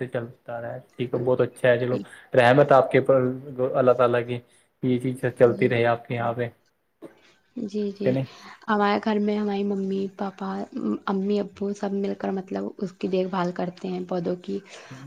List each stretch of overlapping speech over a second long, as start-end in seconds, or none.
none